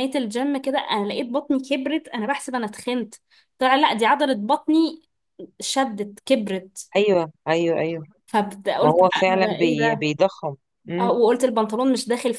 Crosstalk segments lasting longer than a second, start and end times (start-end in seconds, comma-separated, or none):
8.8-10.1